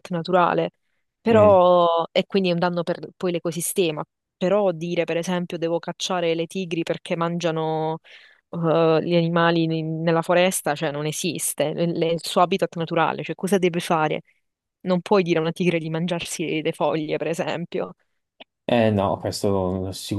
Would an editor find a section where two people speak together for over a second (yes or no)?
no